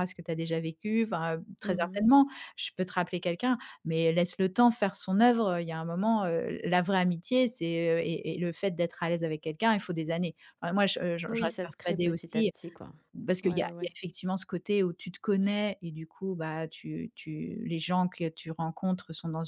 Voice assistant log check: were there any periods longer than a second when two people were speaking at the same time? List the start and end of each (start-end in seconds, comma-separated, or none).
11.3-12.5